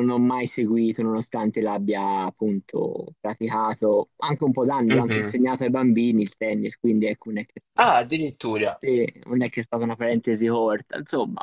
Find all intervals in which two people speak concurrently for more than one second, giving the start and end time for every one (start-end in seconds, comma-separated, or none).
none